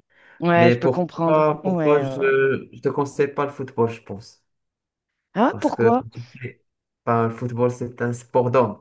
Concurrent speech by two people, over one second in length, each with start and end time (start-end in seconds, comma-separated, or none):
0.6-2.2